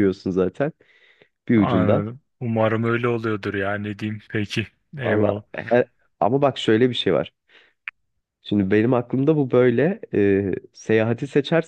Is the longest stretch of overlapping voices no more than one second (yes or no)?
yes